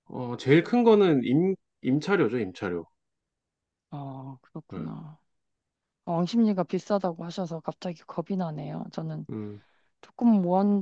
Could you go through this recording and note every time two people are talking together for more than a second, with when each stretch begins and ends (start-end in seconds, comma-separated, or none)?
none